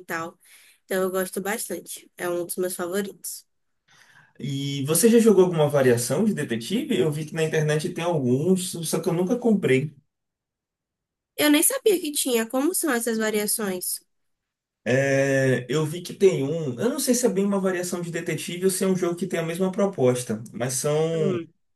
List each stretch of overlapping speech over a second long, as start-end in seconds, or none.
none